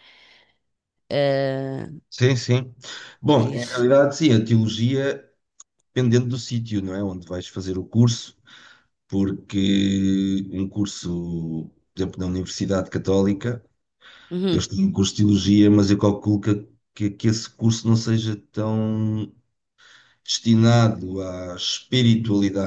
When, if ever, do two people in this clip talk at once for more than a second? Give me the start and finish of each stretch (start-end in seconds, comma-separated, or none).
none